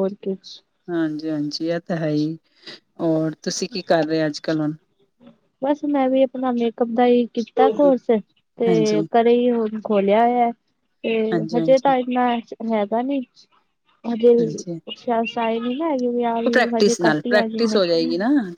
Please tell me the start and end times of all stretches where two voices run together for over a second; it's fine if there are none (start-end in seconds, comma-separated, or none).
16.4-17.8